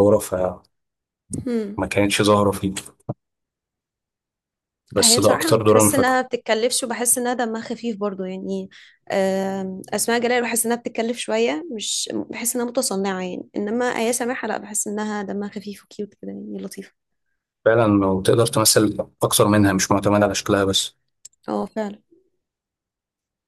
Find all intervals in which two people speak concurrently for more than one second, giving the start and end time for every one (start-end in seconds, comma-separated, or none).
5.0-6.2